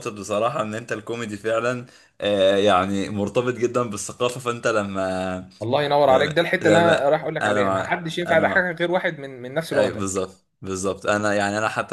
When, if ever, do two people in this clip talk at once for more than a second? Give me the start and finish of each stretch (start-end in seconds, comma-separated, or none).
6.0-8.7